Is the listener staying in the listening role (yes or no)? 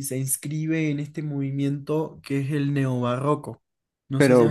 no